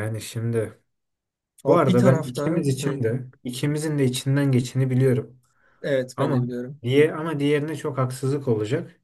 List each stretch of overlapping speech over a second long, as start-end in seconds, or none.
1.6-3.0